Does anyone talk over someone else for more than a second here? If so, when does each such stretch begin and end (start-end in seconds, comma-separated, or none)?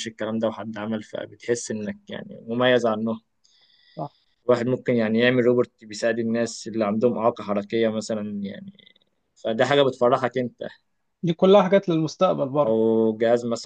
none